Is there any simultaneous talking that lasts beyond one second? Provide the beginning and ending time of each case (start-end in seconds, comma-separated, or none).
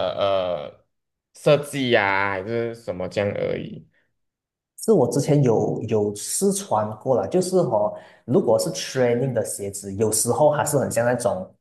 none